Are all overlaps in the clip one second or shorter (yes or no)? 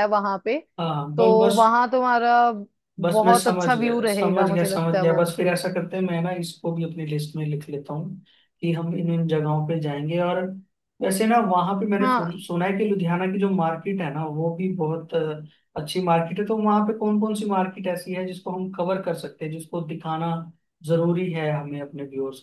no